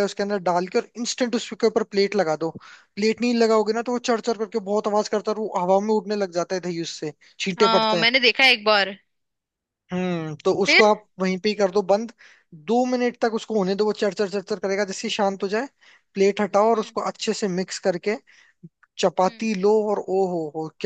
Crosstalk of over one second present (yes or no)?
no